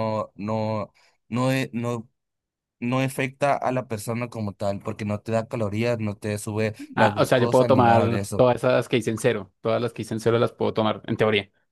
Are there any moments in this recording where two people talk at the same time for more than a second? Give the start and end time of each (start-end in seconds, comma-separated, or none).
7.0-8.5